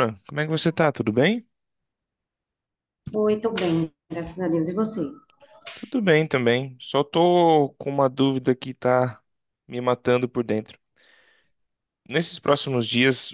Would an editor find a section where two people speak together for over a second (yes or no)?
no